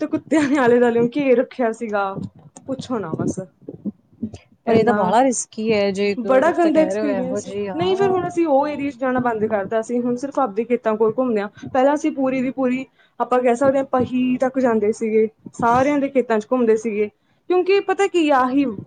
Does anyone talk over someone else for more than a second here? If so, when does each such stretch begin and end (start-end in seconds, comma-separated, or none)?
6.3-8.2